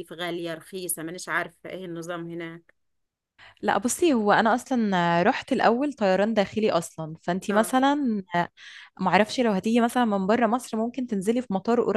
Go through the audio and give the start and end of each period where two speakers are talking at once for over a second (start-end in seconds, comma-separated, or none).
none